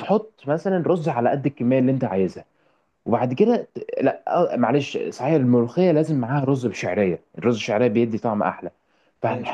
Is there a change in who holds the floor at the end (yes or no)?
no